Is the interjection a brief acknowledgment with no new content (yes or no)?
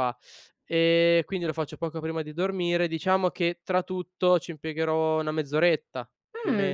no